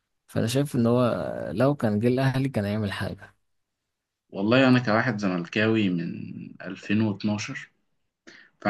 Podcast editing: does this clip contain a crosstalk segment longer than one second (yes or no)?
no